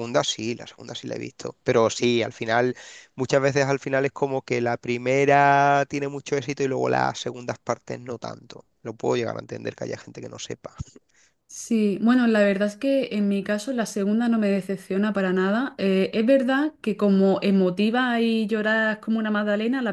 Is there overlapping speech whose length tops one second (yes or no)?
no